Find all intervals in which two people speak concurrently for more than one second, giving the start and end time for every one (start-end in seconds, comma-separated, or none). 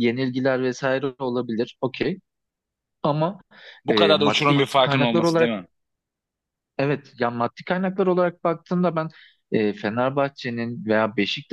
3.9-5.5